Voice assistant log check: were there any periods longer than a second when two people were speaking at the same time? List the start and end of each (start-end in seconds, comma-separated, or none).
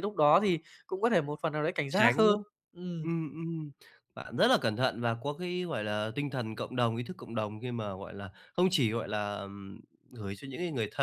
none